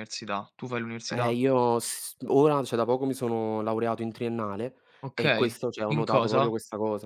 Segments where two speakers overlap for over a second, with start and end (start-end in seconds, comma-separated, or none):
5.2-6.5